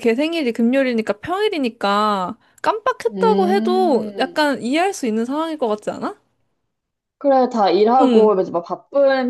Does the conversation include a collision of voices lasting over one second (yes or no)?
yes